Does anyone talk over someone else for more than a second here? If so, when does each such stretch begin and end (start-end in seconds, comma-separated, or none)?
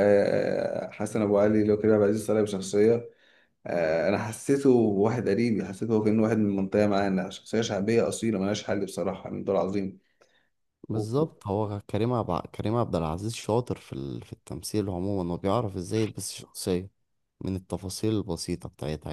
none